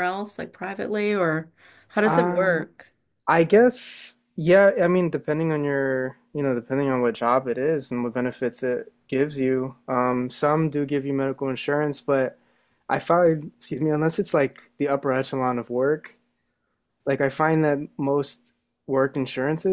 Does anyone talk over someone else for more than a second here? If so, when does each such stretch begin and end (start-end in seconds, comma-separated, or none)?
none